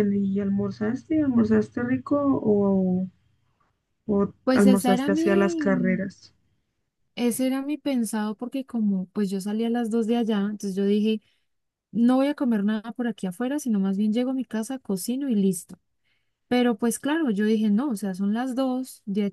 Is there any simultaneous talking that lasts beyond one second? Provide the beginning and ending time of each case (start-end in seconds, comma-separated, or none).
4.4-6.0